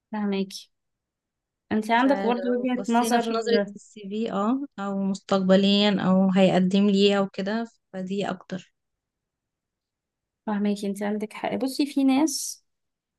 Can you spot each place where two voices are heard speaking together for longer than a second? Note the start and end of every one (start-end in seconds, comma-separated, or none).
2.0-3.4